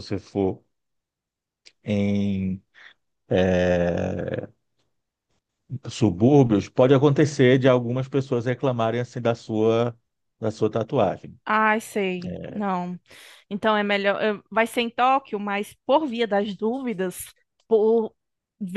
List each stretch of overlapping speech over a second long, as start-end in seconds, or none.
none